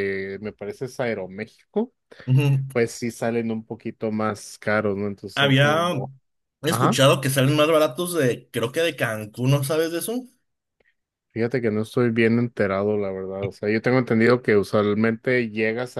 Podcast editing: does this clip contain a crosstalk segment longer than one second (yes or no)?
no